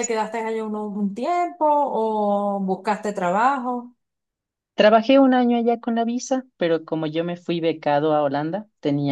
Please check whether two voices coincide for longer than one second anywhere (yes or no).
no